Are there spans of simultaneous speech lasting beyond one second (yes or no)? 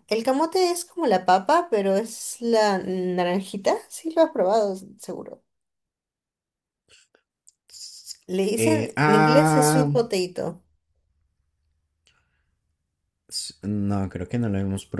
yes